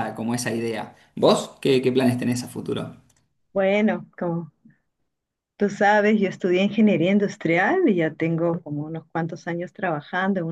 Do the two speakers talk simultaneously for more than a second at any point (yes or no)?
no